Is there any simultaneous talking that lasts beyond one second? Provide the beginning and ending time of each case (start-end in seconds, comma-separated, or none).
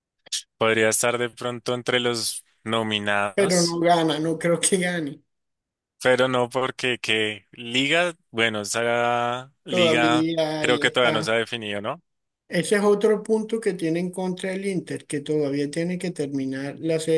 9.7-11.3